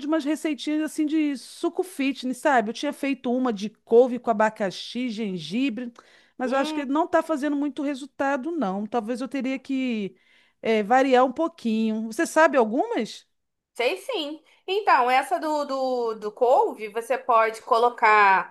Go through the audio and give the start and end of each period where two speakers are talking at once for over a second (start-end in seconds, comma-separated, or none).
none